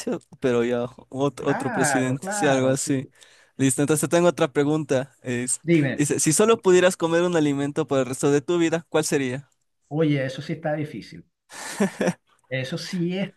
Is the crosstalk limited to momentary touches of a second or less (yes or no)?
no